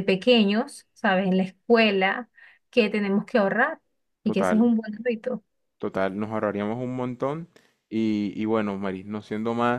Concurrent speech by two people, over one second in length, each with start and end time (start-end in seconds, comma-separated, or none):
none